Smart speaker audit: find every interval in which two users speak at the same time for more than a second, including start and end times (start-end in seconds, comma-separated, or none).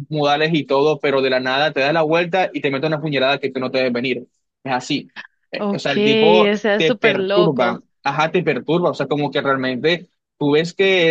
6.5-7.8